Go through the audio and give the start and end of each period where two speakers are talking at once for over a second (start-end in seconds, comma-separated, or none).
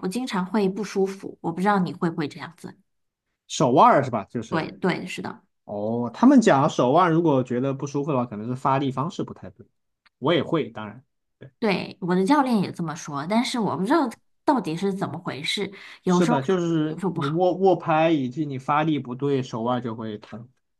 16.0-17.4